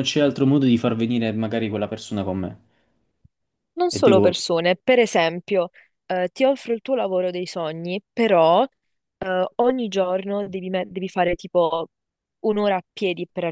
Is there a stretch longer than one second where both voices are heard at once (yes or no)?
no